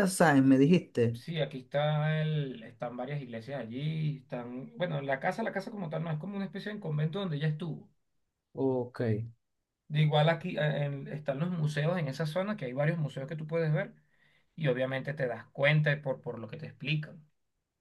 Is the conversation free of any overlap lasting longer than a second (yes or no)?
yes